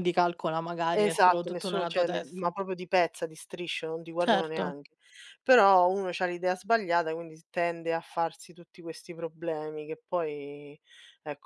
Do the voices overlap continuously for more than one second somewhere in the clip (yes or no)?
yes